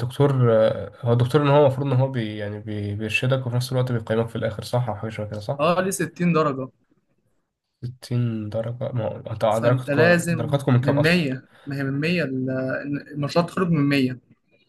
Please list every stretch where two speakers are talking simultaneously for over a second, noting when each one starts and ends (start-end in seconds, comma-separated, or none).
9.5-11.2